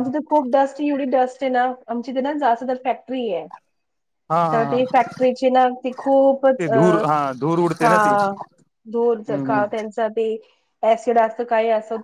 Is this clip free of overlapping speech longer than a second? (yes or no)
yes